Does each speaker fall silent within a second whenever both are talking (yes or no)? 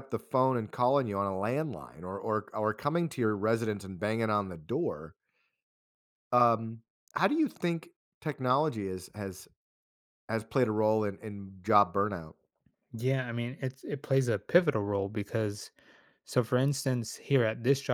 yes